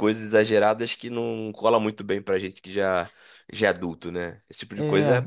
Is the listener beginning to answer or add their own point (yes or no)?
yes